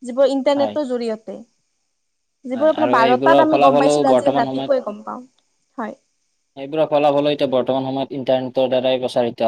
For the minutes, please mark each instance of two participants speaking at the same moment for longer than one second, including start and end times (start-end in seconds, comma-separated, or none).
2.5-4.7